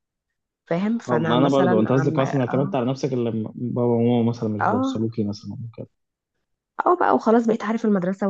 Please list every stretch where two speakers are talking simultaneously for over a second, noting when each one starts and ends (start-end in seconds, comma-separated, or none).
1.1-2.7